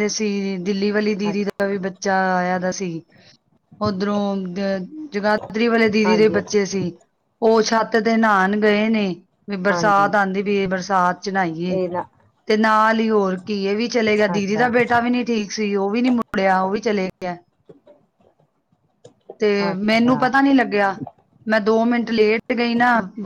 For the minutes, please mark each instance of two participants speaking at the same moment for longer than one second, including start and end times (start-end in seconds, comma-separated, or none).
none